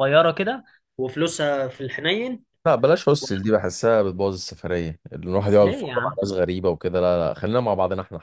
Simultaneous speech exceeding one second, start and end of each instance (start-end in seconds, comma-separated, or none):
none